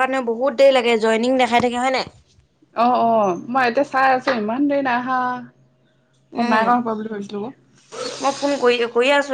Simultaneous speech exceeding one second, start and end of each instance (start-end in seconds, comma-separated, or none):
none